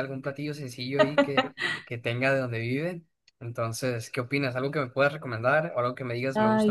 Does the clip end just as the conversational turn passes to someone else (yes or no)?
yes